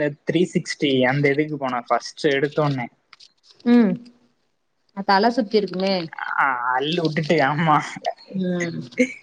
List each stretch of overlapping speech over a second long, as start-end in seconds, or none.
none